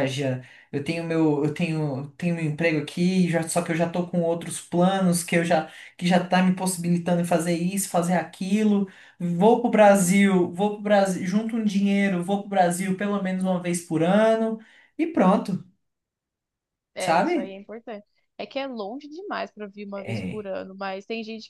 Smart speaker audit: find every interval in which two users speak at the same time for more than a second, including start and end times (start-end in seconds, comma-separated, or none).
none